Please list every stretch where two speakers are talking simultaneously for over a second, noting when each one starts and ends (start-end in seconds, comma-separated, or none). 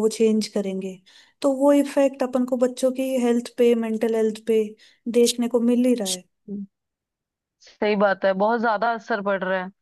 none